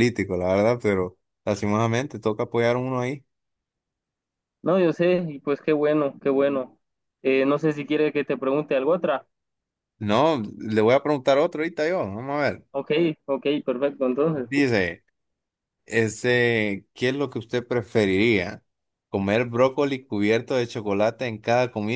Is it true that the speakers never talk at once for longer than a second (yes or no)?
yes